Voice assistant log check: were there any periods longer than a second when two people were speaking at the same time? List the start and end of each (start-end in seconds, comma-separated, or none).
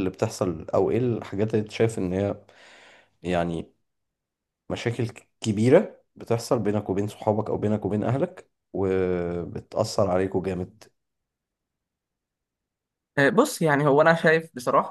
none